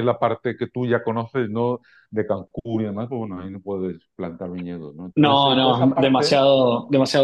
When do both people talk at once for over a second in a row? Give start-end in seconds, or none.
5.2-6.4